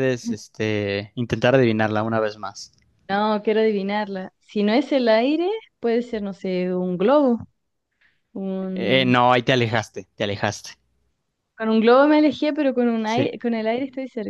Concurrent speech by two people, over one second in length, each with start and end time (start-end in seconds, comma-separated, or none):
none